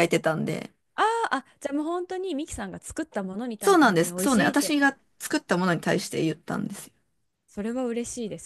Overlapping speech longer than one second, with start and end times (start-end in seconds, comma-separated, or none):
3.6-4.9